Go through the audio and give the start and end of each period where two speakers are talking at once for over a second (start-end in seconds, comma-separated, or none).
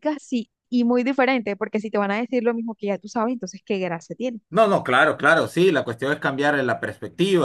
none